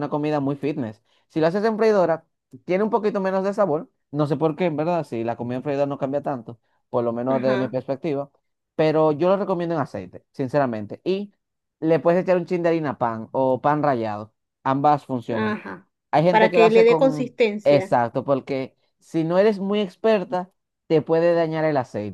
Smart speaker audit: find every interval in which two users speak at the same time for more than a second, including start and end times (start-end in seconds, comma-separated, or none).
16.3-18.0